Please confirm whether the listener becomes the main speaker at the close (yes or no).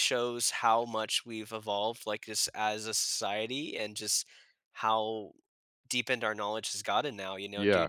no